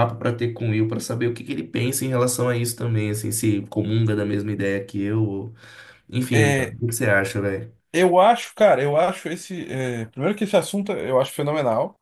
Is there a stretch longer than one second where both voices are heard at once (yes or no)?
no